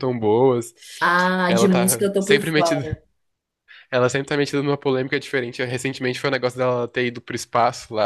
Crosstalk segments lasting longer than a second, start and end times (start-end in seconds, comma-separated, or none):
1.5-2.9